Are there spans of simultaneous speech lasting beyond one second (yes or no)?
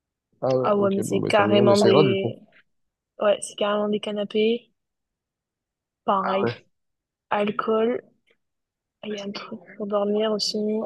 yes